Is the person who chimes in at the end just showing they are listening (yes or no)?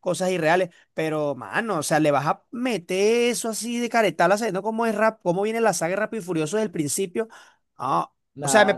yes